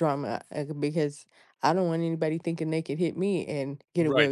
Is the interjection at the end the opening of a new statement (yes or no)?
yes